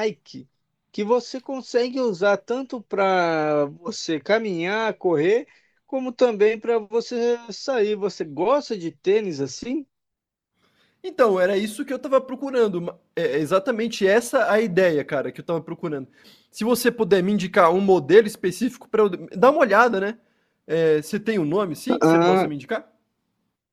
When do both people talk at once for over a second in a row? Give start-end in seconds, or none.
none